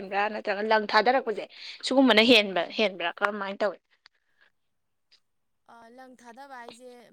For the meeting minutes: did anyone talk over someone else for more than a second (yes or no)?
no